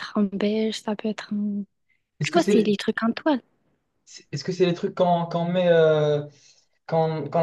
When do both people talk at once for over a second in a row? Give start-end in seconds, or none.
none